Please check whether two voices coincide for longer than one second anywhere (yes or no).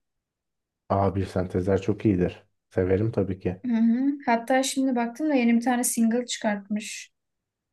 no